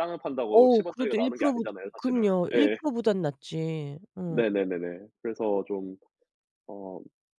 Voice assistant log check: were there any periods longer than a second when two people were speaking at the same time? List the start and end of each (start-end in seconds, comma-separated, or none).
0.5-2.8